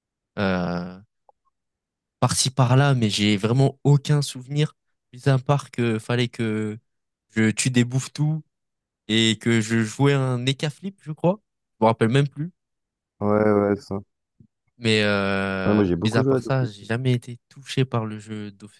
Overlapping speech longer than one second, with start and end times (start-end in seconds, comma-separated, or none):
15.7-16.9